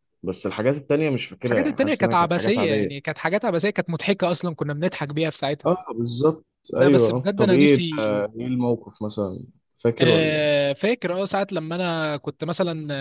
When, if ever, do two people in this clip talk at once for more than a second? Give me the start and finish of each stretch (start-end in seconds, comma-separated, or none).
1.4-3.0, 6.8-8.1